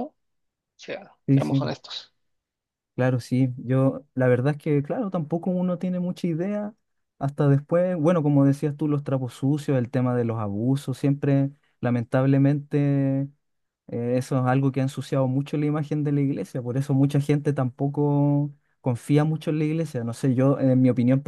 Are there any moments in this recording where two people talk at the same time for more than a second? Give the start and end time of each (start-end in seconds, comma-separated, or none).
none